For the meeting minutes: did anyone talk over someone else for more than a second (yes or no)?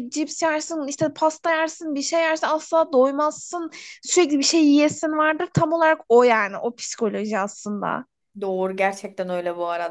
no